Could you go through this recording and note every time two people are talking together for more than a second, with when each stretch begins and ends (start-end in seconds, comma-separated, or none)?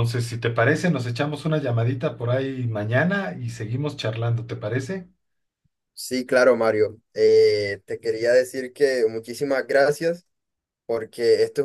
none